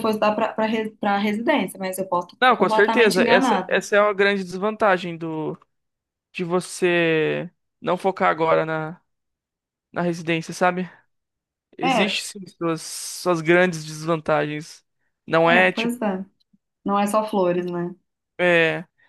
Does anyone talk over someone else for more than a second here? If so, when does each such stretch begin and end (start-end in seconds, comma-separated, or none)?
2.4-3.8